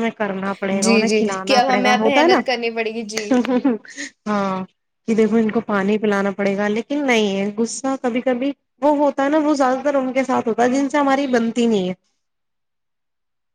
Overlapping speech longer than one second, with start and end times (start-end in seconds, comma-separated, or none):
0.8-2.4